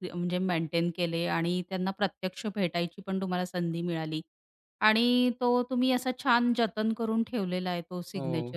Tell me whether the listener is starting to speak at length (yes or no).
no